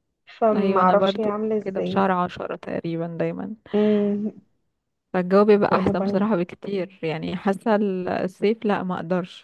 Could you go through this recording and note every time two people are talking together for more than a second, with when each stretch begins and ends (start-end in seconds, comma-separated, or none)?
0.5-2.0